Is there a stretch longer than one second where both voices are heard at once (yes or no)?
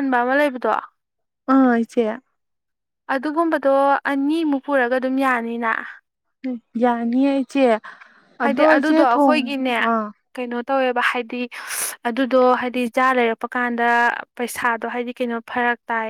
yes